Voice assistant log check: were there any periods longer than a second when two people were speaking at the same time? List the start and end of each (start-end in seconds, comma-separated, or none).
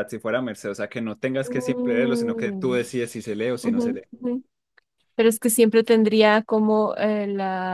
1.4-2.8